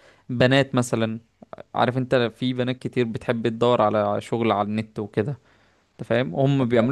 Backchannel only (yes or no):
yes